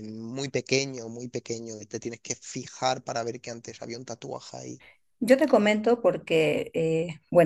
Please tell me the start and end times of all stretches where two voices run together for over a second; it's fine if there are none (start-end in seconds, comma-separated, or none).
none